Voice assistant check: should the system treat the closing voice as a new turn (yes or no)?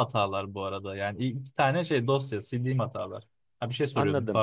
yes